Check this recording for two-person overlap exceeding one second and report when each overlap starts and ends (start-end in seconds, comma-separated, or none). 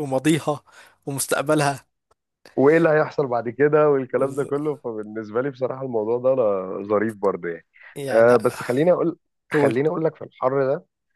none